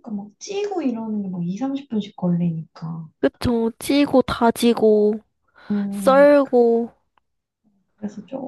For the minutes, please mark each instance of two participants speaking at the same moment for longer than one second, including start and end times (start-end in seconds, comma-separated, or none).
none